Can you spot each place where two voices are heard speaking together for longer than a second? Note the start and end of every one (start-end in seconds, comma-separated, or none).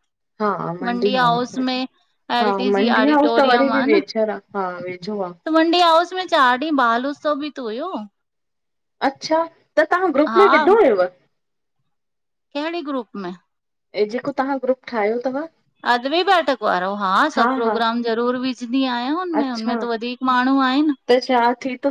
2.4-5.3